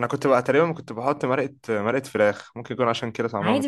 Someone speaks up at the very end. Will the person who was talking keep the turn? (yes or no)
no